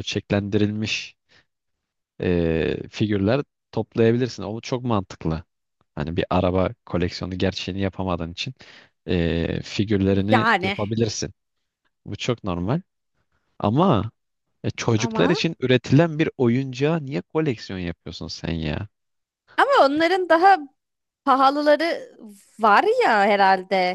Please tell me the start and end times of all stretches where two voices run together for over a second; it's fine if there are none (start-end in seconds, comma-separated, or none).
none